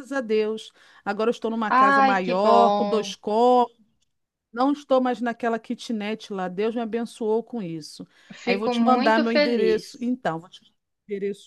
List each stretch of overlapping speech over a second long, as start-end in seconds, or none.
1.7-3.1, 8.4-10.1